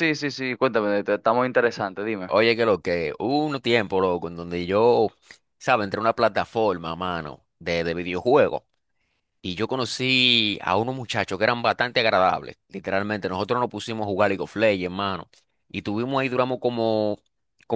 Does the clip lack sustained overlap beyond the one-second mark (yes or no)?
yes